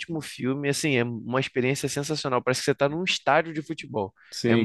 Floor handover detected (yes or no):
yes